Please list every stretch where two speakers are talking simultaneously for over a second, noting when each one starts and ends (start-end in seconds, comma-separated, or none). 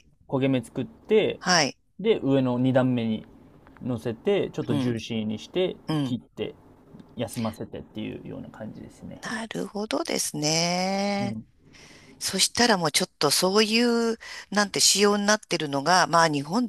none